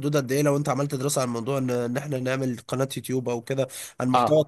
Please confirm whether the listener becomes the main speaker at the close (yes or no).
yes